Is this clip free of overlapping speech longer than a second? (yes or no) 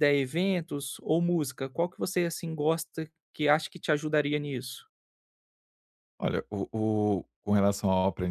yes